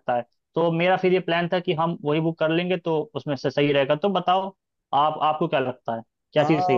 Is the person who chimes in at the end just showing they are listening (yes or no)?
no